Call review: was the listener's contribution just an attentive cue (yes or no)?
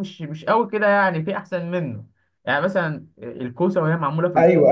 yes